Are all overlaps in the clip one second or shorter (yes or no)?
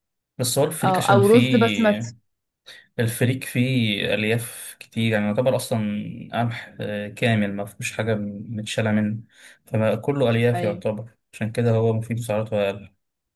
no